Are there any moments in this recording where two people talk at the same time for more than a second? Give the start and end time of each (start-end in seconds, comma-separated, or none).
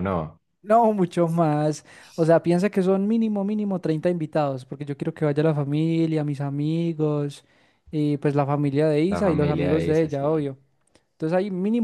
9.1-10.5